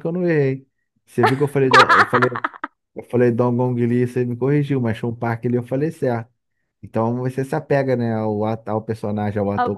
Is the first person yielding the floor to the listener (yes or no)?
no